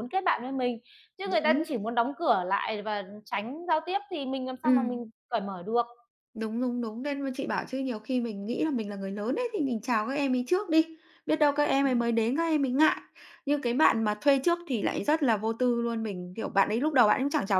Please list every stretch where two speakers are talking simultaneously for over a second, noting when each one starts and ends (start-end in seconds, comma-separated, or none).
none